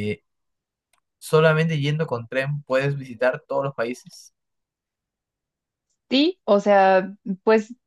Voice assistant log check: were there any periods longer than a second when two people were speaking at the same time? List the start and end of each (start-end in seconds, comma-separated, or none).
none